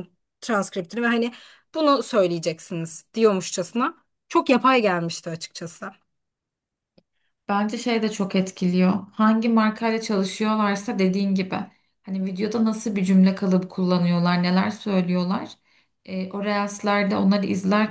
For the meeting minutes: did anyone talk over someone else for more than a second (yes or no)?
no